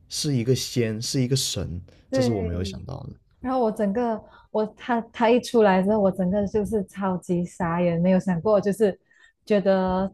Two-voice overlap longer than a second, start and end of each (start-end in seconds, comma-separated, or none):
none